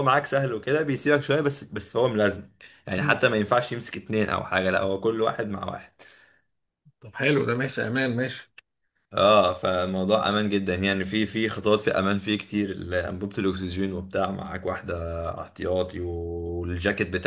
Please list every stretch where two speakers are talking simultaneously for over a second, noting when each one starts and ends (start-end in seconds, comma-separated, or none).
none